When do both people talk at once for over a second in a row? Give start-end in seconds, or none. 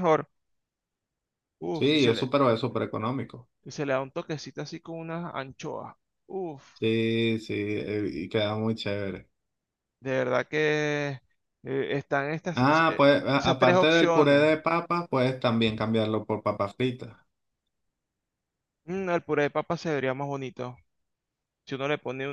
12.6-14.5